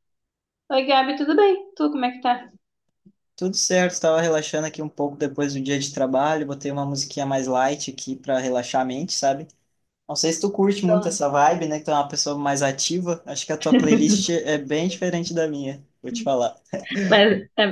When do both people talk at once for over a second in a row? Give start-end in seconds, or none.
none